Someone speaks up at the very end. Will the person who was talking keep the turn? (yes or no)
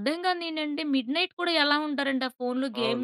no